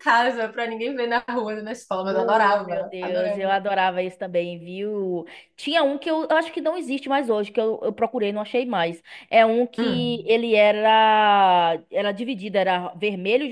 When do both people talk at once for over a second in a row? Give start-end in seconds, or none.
2.1-3.5